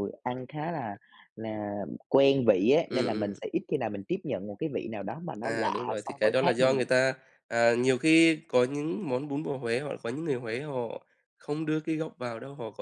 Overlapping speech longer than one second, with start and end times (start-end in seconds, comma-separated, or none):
5.4-6.8